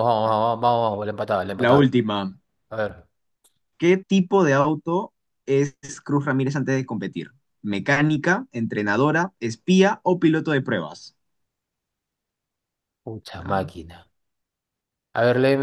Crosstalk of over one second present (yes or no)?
no